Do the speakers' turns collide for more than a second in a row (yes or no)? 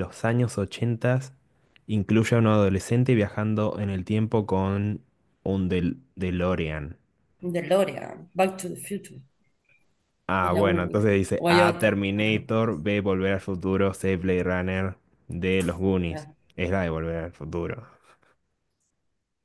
yes